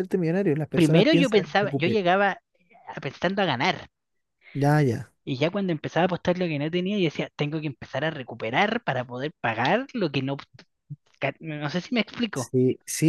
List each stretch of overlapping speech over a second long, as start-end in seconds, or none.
0.8-2.0